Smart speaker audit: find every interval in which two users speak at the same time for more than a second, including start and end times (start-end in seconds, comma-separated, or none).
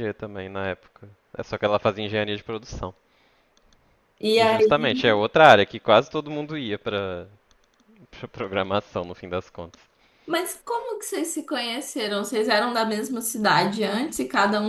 none